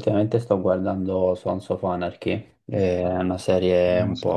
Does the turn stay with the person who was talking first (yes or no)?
yes